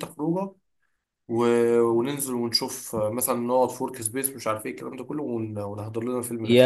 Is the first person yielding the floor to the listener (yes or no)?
yes